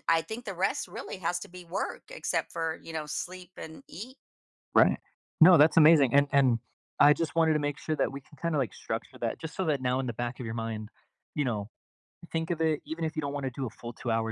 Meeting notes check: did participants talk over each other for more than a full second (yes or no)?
no